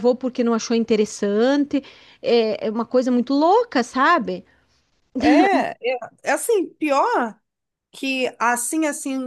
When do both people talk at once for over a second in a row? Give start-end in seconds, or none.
none